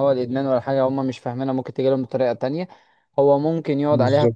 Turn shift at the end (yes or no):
no